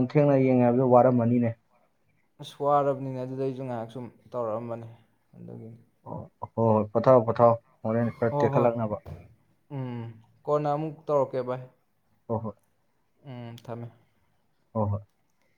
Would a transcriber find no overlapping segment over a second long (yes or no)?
yes